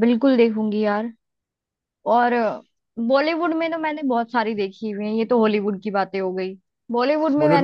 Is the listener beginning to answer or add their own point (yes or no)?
no